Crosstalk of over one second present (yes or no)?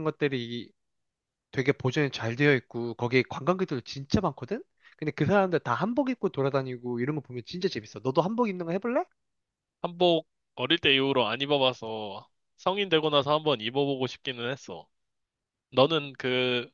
no